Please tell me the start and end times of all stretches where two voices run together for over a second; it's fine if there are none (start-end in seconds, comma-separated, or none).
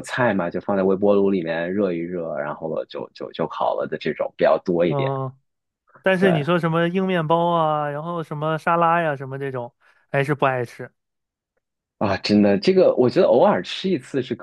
none